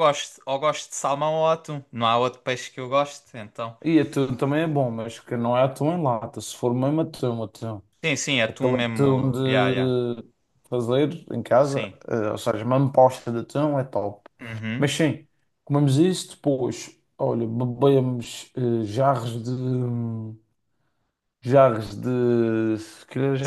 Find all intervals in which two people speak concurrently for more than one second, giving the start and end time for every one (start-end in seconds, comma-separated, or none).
8.5-10.0